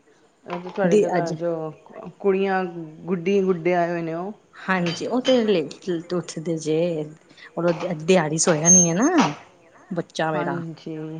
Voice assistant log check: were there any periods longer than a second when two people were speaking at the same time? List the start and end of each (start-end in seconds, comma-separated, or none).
none